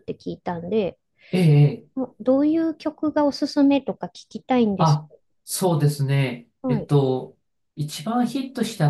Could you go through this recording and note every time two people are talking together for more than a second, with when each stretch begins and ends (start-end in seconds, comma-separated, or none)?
none